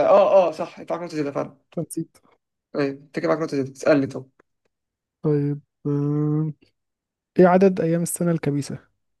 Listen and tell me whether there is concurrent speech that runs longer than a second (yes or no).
no